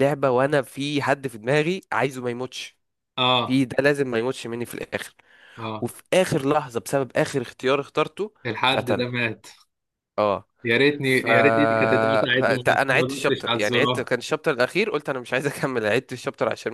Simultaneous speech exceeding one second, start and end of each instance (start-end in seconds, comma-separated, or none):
12.4-14.1